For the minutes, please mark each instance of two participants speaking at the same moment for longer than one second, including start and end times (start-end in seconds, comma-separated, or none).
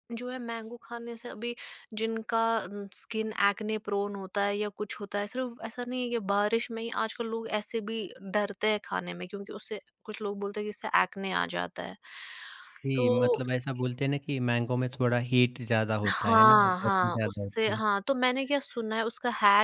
16.1-17.8